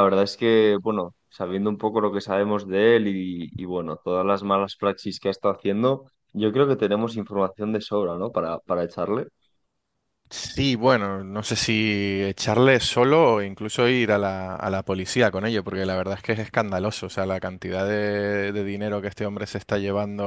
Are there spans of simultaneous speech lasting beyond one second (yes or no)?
no